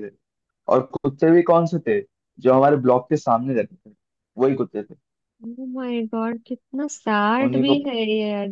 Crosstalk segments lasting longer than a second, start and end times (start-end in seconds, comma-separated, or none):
none